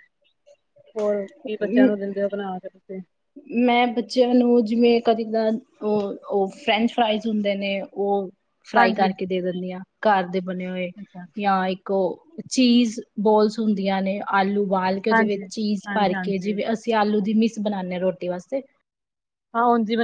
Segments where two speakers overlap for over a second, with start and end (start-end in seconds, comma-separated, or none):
15.1-16.6